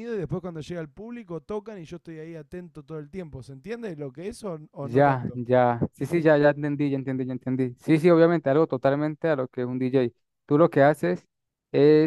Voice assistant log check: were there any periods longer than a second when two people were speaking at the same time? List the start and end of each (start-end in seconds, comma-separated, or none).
none